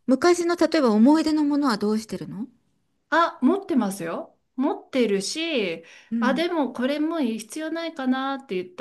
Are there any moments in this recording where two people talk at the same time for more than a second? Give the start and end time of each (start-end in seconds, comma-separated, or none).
none